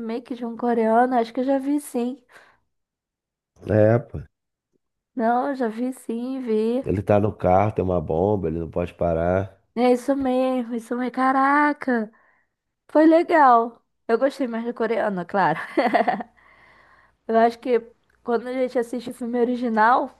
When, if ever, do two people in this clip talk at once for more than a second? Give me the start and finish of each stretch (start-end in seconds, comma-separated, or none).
none